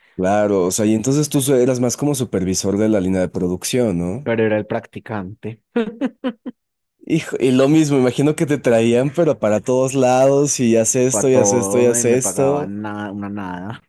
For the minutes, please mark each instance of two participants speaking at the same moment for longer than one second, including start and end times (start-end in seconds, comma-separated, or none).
11.1-12.7